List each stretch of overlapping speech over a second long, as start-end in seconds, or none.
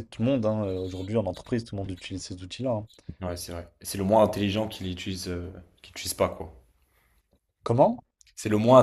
none